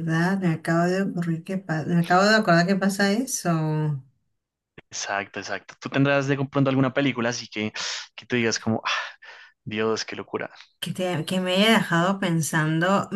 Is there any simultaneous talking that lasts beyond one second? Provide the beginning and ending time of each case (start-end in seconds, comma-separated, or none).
none